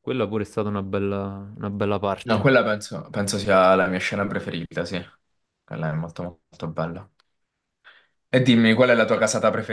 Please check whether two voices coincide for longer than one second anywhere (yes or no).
no